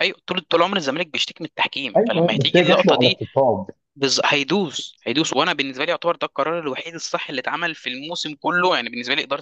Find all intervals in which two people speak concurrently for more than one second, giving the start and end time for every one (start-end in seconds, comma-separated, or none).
2.0-3.2